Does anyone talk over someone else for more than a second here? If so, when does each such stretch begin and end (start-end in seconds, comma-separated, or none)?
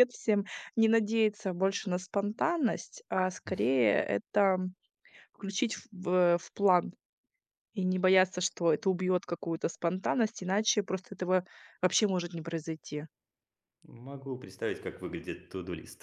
none